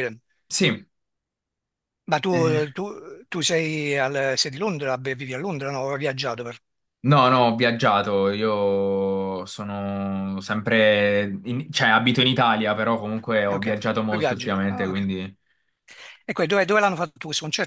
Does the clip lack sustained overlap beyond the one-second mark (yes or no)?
no